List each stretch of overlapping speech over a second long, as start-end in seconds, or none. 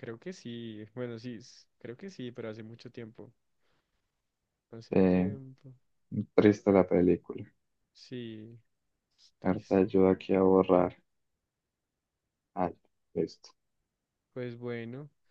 none